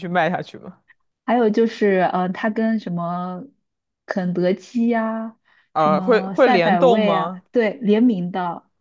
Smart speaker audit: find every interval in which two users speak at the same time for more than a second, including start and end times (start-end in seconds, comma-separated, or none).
5.8-7.4